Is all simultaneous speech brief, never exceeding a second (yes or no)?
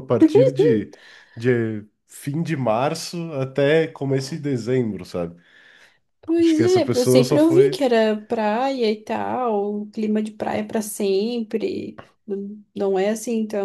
no